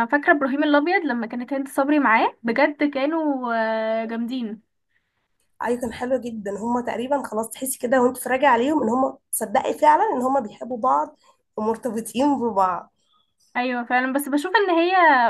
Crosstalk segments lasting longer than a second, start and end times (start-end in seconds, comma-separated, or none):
none